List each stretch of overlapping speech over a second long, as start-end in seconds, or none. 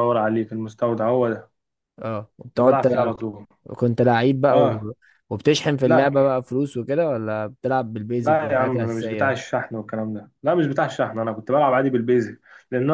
8.2-9.4